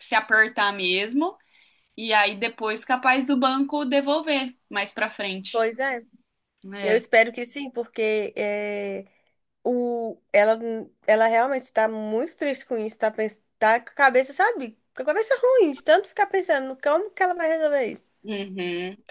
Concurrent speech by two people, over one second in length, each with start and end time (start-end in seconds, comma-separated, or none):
none